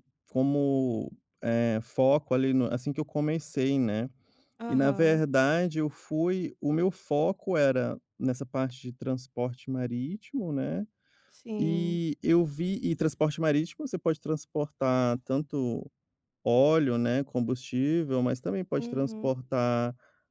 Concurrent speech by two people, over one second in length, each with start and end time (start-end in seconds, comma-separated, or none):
none